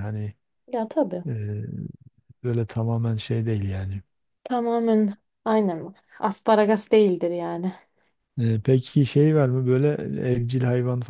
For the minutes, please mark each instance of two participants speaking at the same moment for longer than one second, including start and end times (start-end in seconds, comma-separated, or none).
none